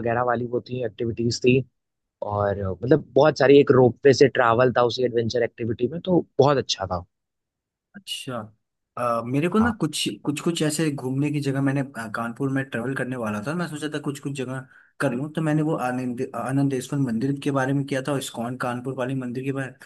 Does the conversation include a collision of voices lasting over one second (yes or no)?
no